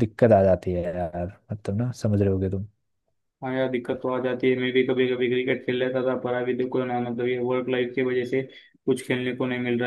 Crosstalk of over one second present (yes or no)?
no